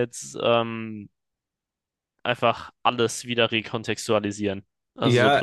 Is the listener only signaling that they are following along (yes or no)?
no